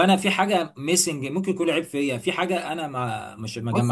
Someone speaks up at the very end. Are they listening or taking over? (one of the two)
taking over